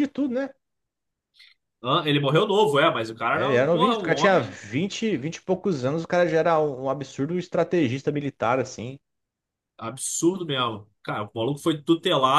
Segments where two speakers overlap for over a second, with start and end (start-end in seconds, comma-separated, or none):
3.3-4.6